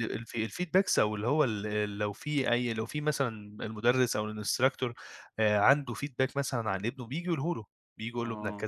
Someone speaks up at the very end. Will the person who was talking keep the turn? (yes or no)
yes